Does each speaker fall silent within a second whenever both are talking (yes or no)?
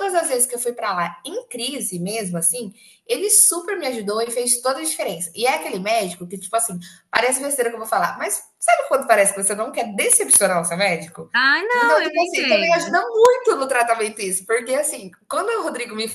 no